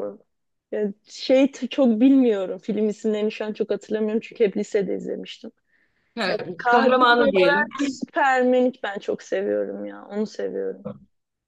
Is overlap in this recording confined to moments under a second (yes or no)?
no